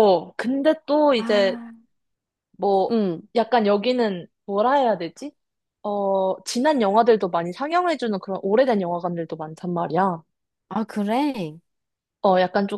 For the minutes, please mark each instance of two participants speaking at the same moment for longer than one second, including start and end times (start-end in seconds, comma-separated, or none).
none